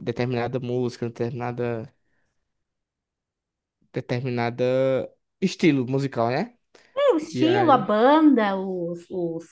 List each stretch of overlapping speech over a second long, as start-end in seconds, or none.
none